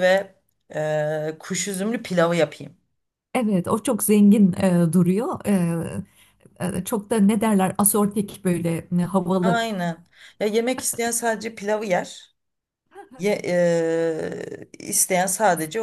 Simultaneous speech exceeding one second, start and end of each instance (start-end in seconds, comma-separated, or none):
none